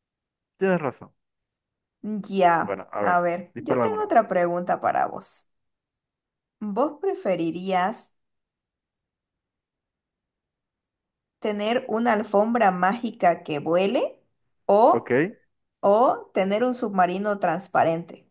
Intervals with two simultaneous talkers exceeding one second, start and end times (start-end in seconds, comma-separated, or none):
2.6-4.1